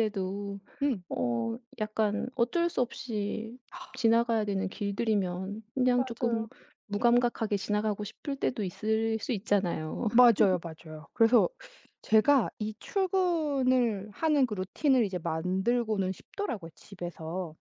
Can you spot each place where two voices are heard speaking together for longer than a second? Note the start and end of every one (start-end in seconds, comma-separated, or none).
none